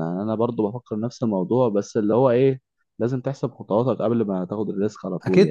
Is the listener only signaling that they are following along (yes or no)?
no